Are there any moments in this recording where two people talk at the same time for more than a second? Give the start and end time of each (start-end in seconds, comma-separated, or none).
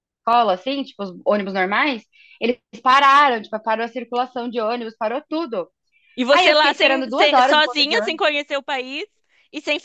6.3-8.0